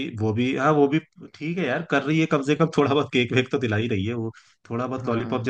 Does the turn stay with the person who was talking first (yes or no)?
no